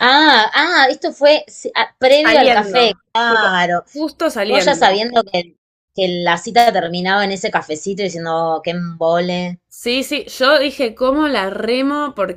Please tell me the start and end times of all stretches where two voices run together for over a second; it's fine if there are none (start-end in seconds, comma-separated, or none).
2.1-3.5